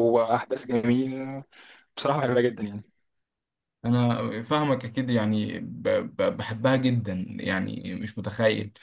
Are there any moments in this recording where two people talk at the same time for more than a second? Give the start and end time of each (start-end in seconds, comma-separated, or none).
none